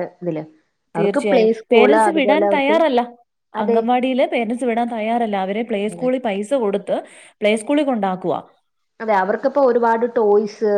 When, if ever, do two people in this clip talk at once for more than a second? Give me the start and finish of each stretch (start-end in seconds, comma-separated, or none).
1.0-2.8